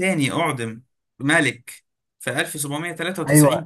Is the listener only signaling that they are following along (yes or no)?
no